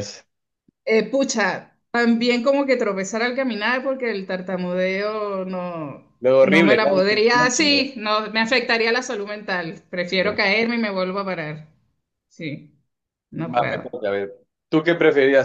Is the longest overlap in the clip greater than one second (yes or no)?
yes